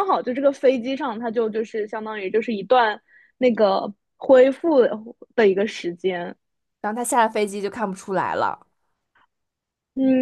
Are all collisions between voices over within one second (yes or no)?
yes